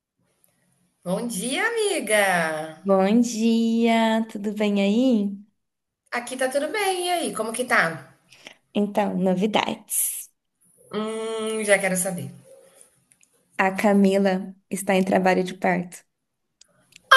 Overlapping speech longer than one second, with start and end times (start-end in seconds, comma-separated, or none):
none